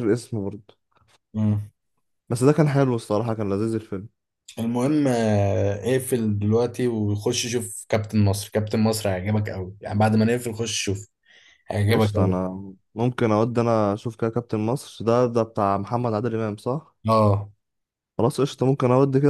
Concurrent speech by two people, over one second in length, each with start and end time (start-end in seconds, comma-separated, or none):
none